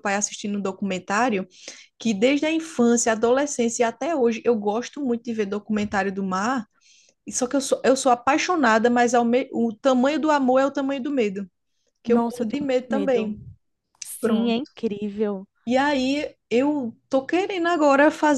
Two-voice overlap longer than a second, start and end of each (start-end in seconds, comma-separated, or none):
12.1-13.3